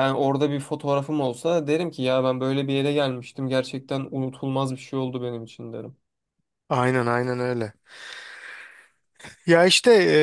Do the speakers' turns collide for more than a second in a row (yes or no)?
no